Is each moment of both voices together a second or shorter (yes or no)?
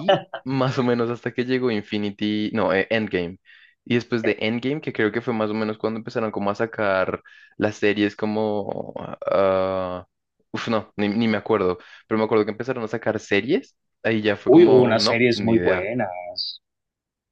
no